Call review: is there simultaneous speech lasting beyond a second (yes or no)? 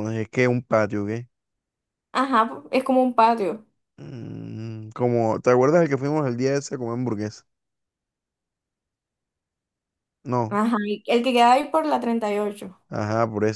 no